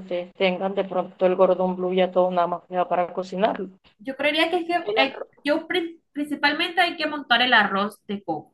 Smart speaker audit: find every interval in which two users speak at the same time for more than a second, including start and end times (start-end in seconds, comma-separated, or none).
none